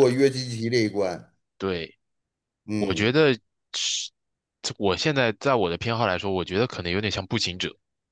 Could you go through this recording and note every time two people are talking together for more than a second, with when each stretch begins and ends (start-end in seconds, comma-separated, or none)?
none